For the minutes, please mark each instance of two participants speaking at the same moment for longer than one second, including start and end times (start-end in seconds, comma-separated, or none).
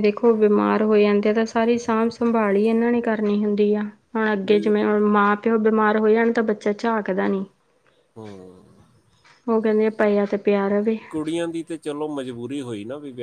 none